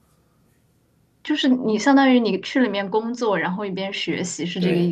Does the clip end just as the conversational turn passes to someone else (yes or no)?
yes